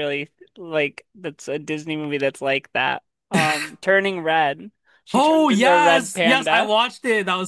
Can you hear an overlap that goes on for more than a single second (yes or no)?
yes